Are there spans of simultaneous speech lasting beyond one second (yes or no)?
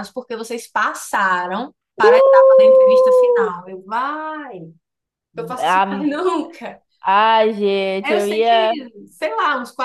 yes